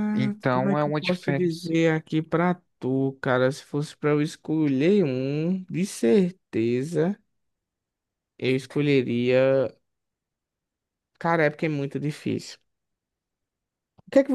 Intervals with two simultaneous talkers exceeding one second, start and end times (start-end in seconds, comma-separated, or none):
0.5-1.7